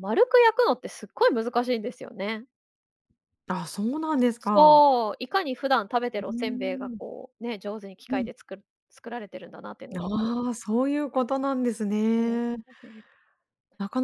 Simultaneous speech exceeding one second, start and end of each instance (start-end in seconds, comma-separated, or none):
none